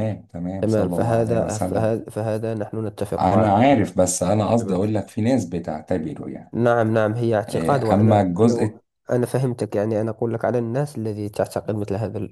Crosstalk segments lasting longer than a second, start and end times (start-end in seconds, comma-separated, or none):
0.6-1.9, 7.5-8.8